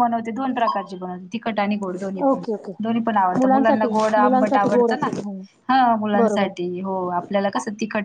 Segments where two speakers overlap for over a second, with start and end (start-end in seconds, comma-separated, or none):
3.4-5.1